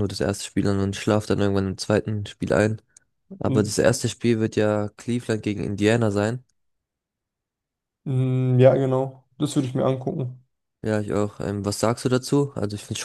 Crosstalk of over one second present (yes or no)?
no